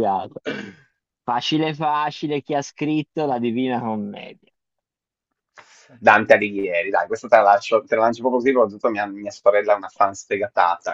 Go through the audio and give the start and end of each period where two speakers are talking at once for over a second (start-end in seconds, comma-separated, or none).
none